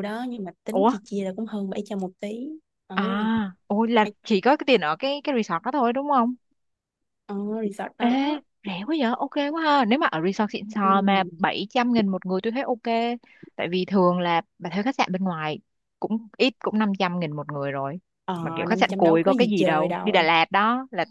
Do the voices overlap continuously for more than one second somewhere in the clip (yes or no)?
yes